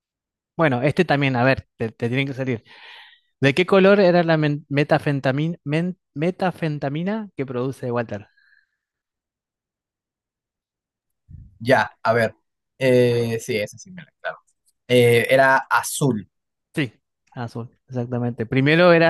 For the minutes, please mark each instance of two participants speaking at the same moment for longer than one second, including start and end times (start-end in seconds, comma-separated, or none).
none